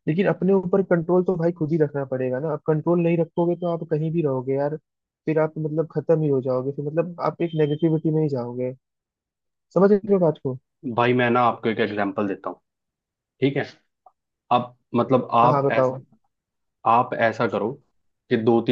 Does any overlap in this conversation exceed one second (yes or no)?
no